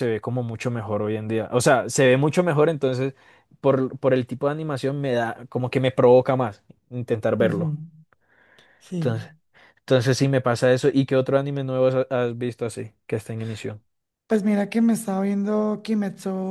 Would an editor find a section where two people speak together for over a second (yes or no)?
no